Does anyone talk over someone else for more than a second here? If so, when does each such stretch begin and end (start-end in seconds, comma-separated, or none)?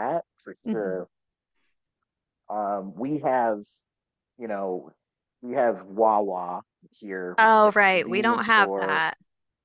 7.4-9.1